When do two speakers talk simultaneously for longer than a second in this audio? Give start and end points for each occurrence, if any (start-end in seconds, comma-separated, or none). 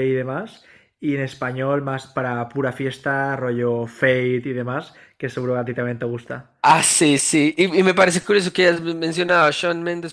none